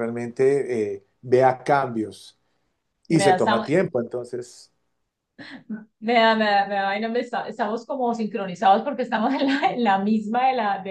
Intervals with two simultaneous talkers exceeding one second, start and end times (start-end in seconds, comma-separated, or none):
none